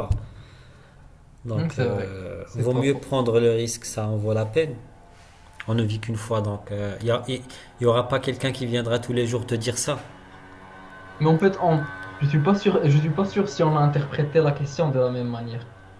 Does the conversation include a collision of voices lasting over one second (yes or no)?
yes